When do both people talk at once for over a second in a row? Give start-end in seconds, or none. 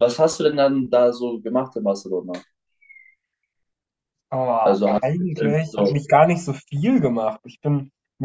4.6-6.0